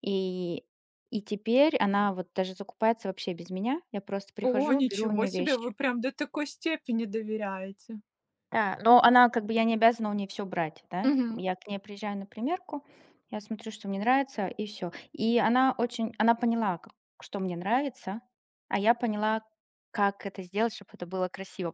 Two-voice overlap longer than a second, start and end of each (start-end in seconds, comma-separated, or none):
4.4-5.7